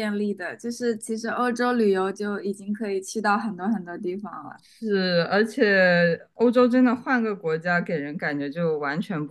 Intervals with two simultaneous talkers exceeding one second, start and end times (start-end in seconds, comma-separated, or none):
none